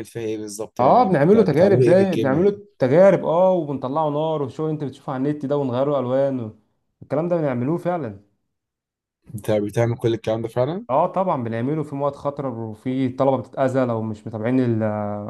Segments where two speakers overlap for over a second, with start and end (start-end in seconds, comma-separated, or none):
0.8-2.6